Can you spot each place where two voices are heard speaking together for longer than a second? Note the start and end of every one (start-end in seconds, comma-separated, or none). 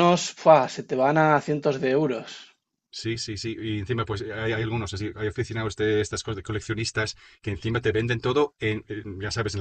none